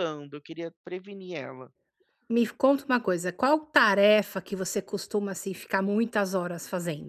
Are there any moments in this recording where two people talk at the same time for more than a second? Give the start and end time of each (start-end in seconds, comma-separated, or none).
none